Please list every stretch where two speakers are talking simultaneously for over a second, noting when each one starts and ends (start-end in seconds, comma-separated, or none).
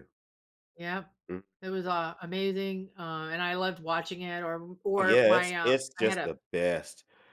5.0-6.3